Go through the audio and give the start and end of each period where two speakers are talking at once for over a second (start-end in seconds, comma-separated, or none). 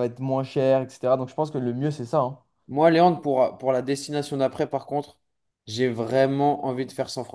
none